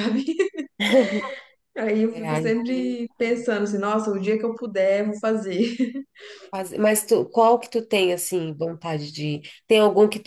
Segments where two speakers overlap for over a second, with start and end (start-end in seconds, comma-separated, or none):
2.1-3.6